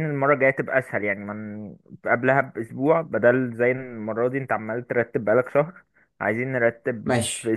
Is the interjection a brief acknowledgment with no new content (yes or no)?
no